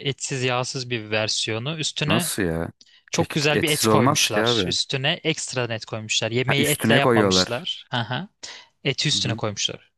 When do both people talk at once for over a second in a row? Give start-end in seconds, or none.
3.1-4.7, 6.5-7.7